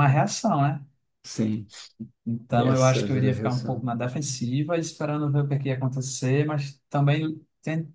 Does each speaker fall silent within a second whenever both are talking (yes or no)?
no